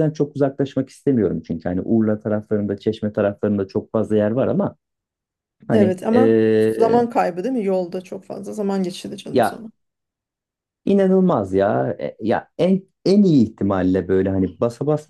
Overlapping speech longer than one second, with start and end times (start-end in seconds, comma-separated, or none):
5.7-7.0